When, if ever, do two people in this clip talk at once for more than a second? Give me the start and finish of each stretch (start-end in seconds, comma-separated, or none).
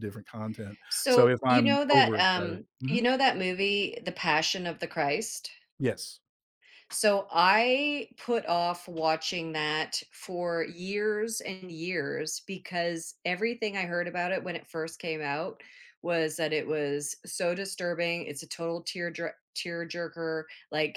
0.9-3.0